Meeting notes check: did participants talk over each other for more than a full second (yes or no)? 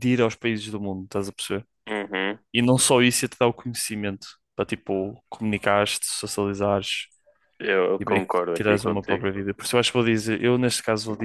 yes